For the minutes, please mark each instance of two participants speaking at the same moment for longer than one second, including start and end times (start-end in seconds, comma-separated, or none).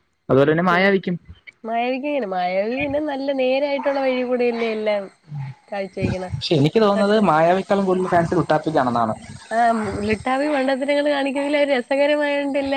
none